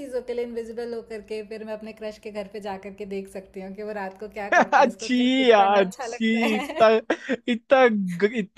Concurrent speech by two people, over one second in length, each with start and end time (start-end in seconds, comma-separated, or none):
4.5-6.8